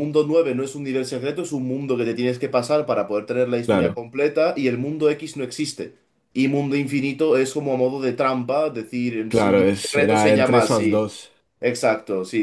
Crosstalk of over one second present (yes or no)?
yes